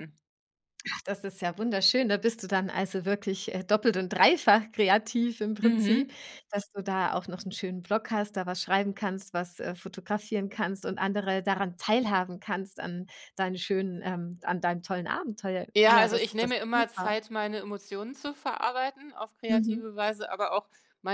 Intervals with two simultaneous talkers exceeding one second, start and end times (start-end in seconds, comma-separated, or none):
15.8-17.1